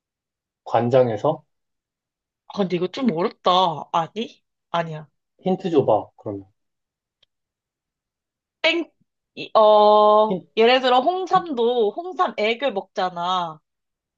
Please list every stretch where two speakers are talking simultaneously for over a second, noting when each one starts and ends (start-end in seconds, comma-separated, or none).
none